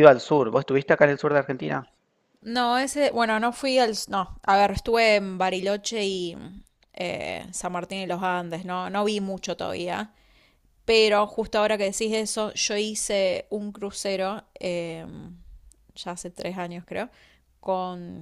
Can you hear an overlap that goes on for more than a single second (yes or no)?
no